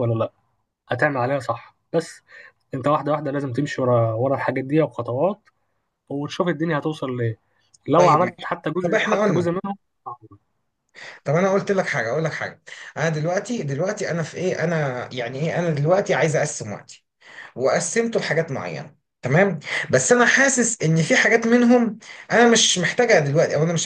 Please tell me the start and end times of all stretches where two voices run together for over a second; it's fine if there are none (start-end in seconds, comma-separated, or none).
8.0-9.5